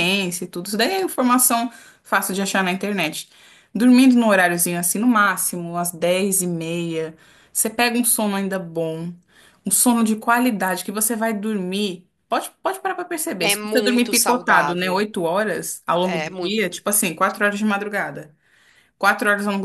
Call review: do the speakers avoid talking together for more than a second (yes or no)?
no